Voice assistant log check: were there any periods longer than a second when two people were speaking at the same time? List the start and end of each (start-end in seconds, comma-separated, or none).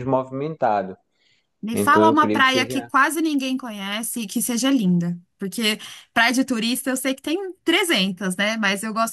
1.7-2.9